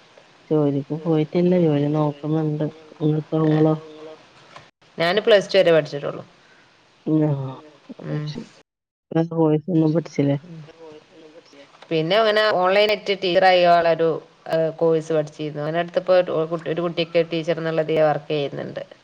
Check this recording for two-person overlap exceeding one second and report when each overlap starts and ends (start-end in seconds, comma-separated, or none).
none